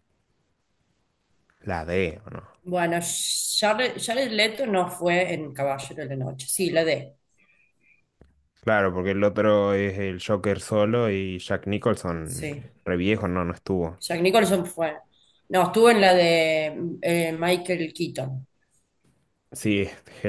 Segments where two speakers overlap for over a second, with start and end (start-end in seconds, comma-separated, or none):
none